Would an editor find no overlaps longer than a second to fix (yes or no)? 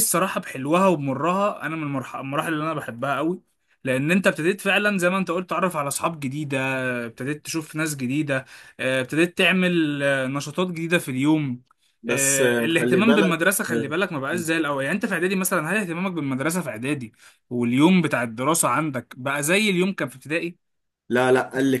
no